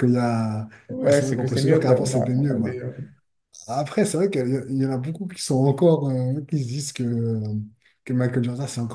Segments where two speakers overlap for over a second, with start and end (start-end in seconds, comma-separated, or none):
0.9-2.8